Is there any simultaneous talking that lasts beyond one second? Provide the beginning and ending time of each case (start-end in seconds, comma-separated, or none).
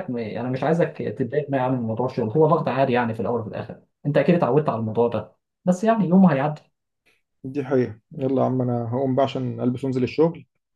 none